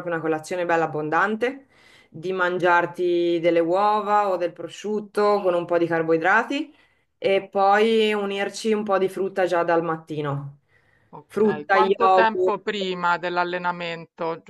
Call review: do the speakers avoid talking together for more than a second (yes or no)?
no